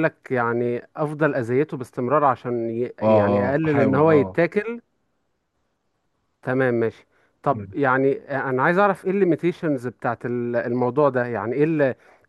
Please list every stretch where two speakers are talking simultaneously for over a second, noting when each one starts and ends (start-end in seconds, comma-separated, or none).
3.0-4.4